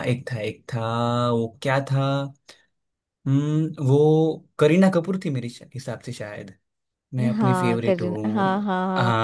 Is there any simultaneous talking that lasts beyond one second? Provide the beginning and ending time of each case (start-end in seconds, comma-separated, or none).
7.4-8.6